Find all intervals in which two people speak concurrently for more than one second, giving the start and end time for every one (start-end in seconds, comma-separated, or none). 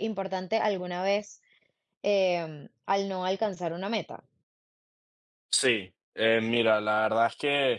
none